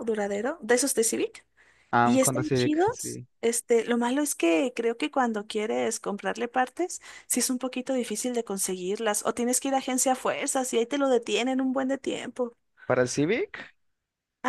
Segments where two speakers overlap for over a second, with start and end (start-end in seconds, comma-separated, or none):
2.0-3.3